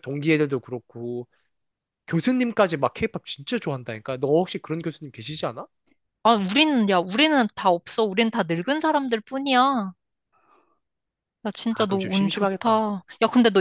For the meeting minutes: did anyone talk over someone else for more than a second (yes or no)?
yes